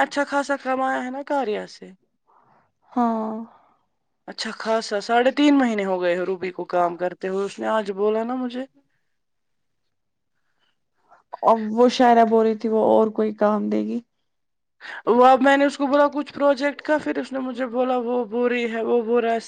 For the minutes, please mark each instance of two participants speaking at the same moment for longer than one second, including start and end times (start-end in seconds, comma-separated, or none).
none